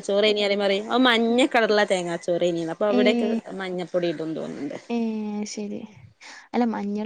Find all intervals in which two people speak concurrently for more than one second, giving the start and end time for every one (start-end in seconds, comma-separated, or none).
none